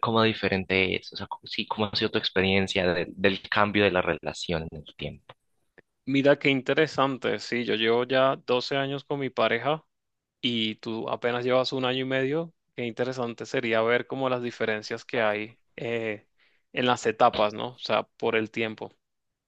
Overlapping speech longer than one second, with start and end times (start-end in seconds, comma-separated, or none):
none